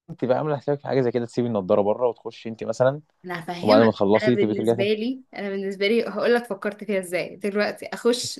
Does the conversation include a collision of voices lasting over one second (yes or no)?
yes